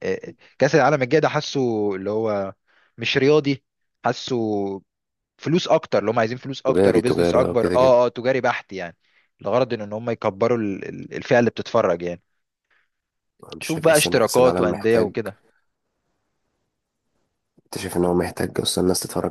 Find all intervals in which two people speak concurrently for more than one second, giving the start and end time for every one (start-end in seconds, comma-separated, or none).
6.7-8.0, 13.6-15.1